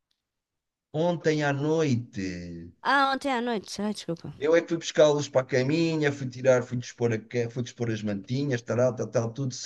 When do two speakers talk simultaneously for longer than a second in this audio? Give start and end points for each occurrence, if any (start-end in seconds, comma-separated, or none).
none